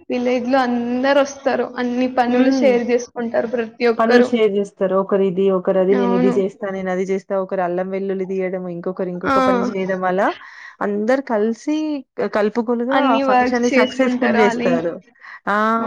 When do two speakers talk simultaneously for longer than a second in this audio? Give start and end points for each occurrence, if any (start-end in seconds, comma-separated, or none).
13.0-14.7